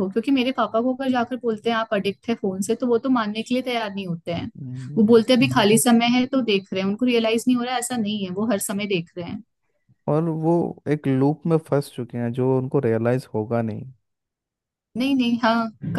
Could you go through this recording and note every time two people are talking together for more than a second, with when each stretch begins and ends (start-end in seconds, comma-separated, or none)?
none